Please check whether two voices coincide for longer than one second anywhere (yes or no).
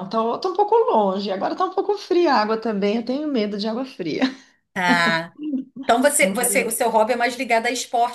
no